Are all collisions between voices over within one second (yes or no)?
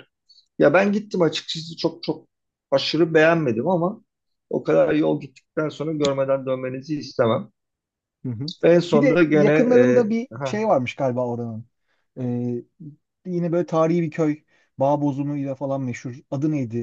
no